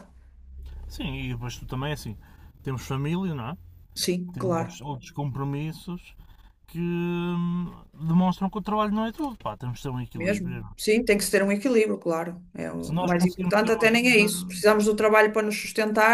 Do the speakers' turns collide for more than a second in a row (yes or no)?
yes